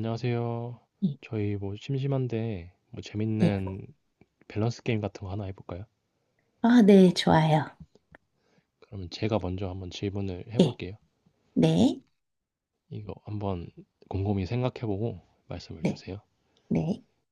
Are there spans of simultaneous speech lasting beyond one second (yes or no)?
no